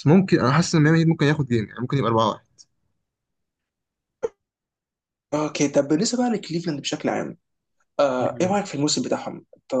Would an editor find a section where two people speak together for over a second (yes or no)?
no